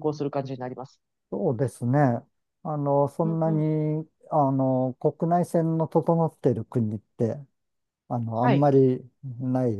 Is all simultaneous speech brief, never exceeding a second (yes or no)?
yes